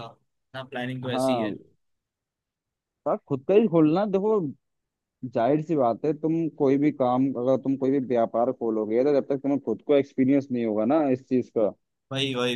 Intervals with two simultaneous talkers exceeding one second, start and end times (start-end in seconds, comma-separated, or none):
none